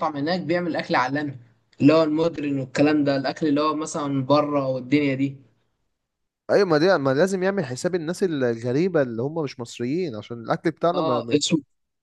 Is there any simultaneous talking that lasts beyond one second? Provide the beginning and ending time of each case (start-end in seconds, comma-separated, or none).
none